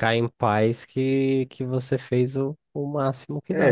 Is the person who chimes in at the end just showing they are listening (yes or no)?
no